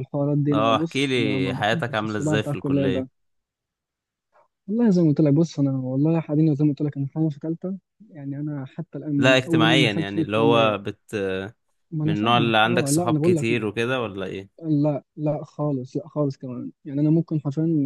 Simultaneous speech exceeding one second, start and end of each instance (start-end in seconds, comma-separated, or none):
0.5-3.1, 9.2-10.8, 12.1-13.5